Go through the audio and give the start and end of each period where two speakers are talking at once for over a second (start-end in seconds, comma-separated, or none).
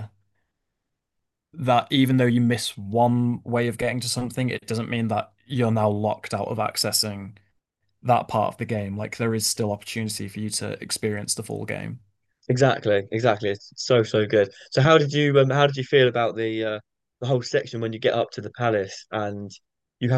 none